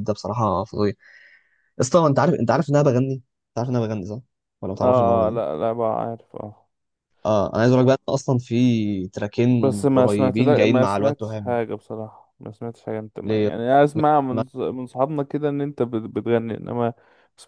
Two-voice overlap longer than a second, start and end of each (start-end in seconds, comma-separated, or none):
9.6-11.6